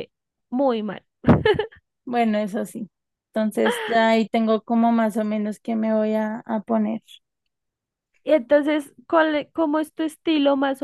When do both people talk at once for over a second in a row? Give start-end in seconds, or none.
none